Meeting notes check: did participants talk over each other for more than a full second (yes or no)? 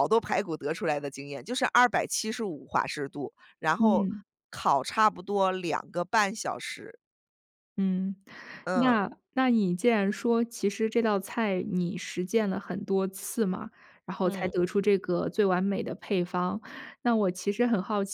no